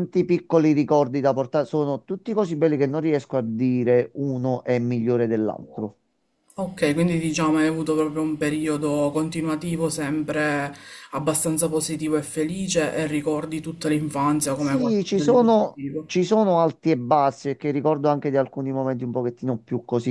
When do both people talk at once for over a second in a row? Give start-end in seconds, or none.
14.5-16.1